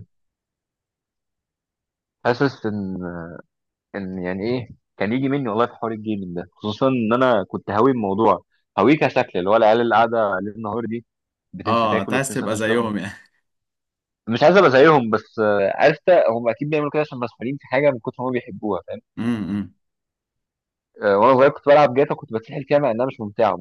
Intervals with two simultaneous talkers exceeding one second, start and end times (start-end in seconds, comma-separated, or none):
11.7-12.9